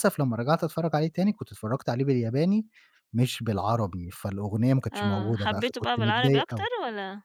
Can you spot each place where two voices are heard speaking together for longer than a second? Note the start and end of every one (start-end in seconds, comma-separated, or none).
4.9-6.7